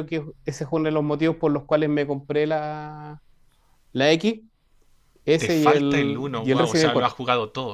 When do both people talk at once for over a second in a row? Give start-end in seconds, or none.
5.4-7.2